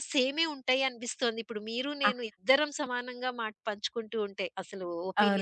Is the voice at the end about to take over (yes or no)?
yes